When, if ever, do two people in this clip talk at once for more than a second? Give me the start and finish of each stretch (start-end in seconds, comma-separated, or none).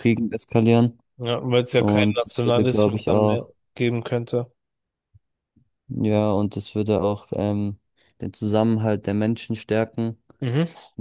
1.8-3.5